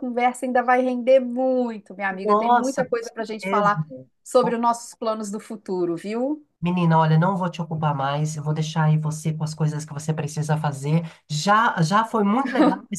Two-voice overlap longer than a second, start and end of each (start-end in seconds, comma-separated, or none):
2.2-3.7